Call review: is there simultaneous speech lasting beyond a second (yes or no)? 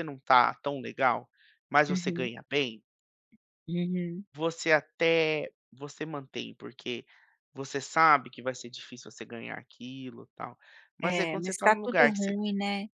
yes